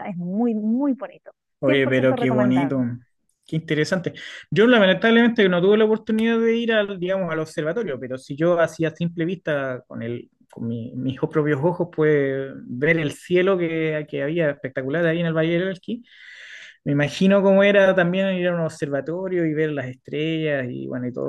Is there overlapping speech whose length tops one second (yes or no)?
yes